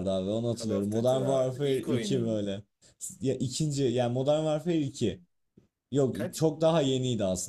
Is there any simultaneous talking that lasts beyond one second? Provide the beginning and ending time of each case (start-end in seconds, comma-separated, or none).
0.6-2.4